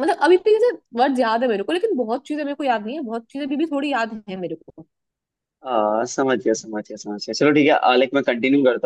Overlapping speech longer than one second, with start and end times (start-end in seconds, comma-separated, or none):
none